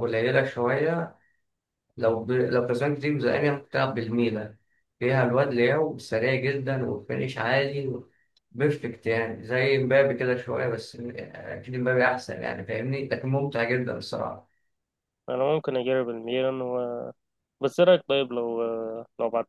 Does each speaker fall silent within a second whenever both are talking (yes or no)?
yes